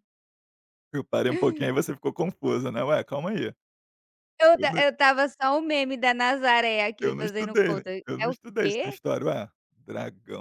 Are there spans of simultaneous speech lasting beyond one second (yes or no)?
yes